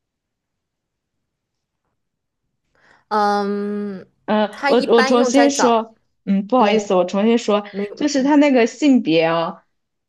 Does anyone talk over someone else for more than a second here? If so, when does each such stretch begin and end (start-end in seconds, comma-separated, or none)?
4.5-5.8